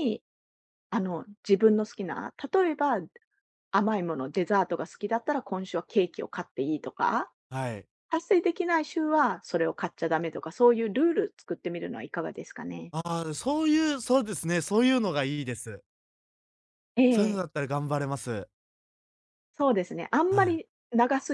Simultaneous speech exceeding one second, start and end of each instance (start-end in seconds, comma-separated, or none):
none